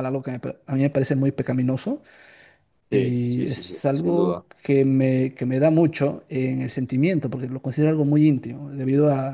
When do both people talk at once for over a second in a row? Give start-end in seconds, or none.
2.9-4.4